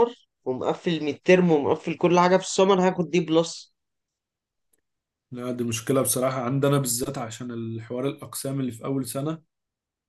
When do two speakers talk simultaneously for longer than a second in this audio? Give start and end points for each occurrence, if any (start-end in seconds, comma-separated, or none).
none